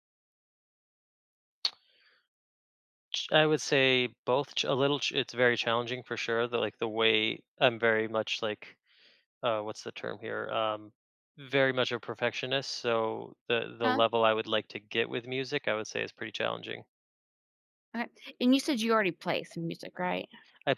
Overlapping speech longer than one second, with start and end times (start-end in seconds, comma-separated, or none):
none